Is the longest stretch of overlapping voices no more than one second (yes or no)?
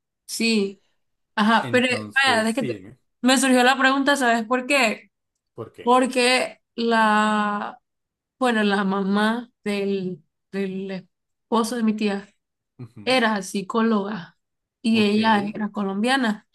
no